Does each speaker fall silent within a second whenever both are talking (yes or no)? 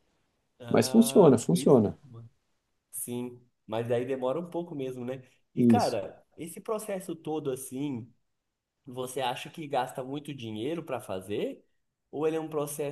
no